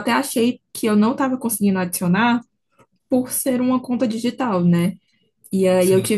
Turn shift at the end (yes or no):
no